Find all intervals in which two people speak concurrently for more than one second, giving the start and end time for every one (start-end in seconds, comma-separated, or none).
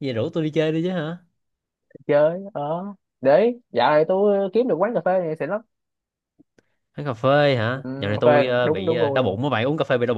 7.7-9.4